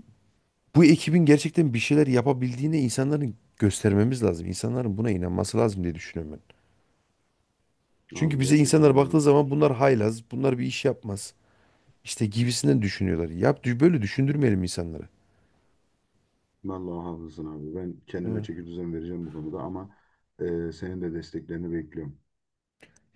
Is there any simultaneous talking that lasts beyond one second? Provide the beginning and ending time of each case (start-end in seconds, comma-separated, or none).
8.1-9.6